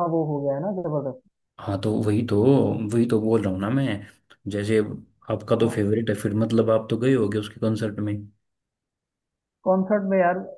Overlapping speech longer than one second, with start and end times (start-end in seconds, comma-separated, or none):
none